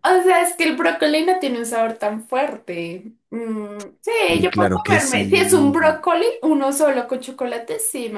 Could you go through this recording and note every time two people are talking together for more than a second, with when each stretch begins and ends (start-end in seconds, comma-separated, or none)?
4.3-6.0